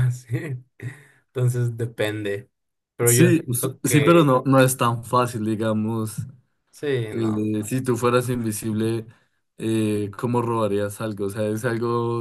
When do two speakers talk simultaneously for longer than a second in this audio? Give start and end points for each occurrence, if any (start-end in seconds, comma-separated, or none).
3.1-4.3